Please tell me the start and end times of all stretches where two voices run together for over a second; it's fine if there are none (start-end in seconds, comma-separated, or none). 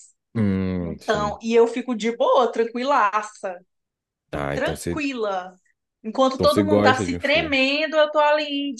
6.3-7.6